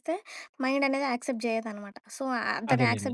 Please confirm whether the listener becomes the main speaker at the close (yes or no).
no